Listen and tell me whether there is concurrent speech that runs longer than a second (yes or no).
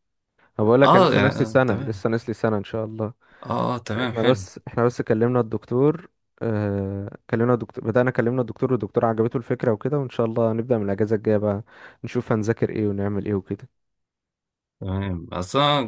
yes